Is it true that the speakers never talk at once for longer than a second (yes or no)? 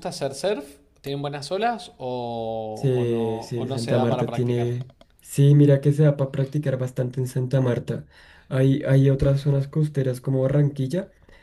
no